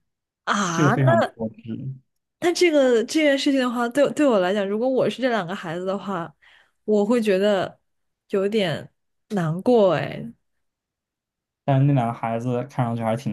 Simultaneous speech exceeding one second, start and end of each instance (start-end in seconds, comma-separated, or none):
none